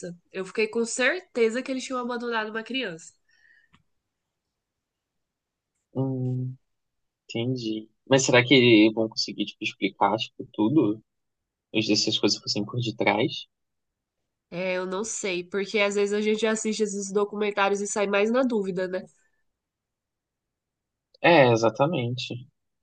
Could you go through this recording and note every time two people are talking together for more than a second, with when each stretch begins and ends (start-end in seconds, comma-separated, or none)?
none